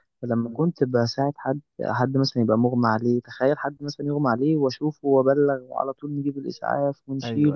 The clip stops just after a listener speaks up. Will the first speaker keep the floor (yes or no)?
yes